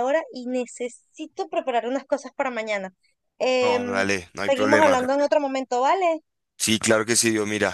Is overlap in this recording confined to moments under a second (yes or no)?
no